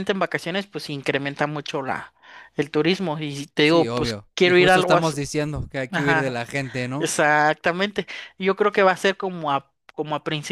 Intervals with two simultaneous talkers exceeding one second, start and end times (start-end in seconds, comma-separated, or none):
3.6-5.2